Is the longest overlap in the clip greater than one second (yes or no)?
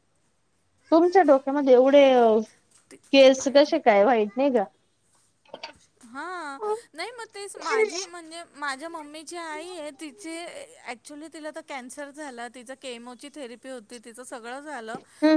no